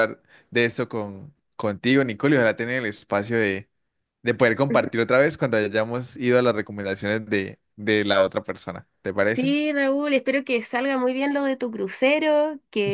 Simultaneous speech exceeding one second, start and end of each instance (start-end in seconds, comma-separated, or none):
none